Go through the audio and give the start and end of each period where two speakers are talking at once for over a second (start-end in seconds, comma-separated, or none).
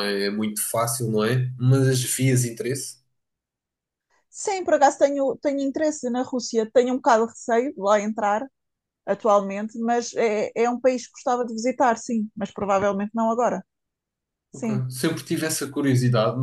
none